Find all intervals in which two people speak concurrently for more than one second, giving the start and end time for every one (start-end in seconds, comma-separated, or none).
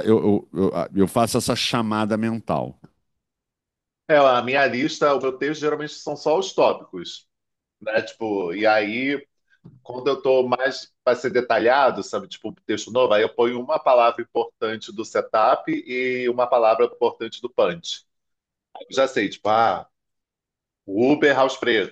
none